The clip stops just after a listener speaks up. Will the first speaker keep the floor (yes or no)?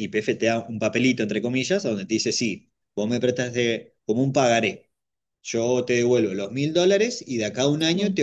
yes